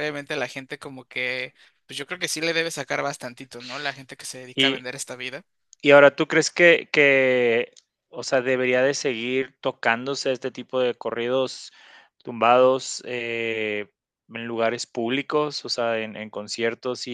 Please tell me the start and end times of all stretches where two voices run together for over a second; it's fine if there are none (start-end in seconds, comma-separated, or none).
none